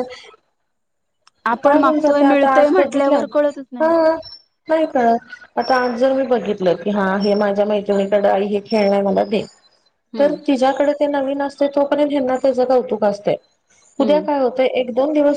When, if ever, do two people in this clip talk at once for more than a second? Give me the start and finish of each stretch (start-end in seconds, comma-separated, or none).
1.6-3.2